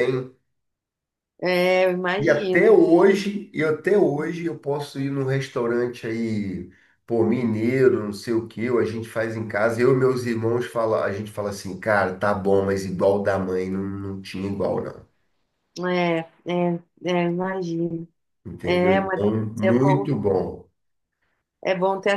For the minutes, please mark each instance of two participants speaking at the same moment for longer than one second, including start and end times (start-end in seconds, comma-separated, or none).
18.6-20.1